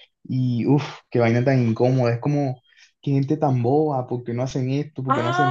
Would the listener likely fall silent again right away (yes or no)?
no